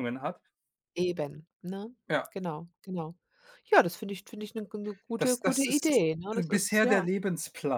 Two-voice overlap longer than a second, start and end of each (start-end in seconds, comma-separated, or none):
5.2-7.0